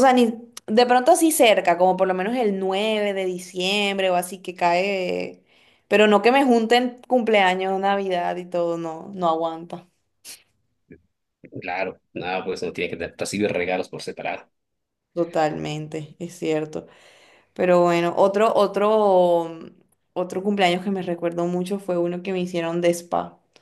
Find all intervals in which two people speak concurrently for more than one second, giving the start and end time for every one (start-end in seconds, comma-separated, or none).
none